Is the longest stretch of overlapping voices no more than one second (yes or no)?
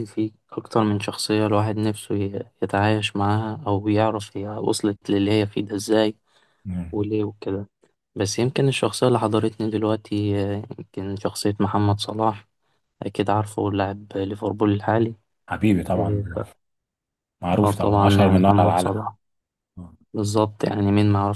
no